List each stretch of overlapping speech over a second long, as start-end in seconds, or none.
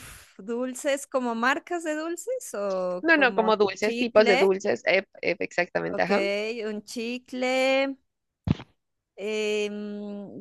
3.0-4.5